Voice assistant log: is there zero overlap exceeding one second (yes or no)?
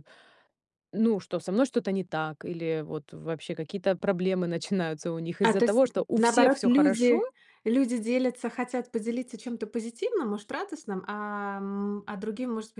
no